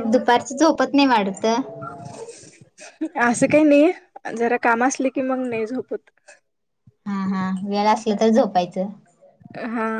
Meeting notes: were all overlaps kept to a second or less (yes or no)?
yes